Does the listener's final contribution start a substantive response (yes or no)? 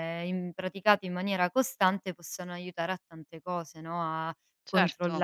no